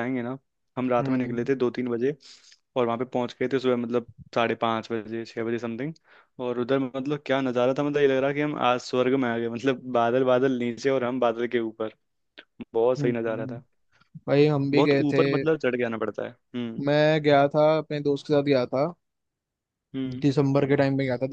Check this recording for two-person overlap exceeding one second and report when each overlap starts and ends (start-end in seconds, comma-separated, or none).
none